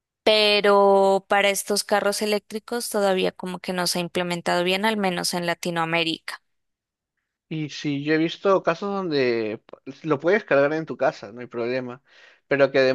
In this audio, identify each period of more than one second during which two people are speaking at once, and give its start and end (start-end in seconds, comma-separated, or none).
none